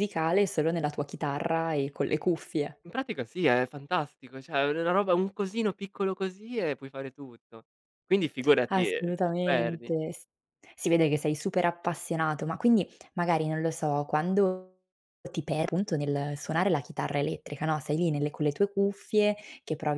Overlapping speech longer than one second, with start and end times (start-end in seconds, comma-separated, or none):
8.7-9.9